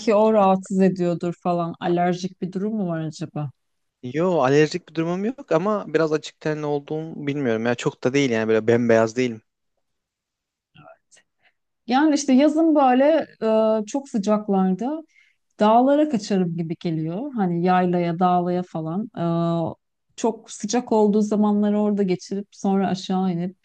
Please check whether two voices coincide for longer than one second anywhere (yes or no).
no